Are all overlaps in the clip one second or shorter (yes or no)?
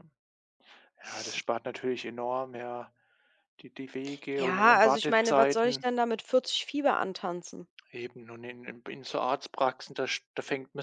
no